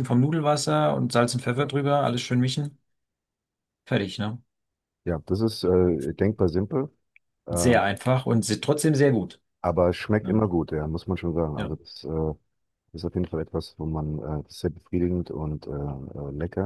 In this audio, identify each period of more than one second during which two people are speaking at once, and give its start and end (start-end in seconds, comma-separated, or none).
none